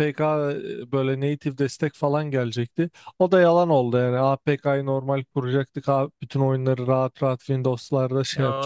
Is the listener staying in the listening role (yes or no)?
no